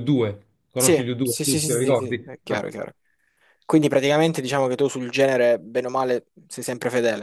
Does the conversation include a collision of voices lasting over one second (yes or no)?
yes